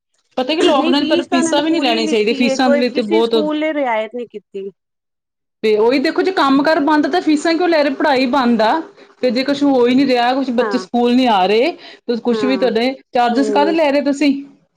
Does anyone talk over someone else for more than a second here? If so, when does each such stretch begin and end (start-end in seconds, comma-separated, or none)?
0.8-3.3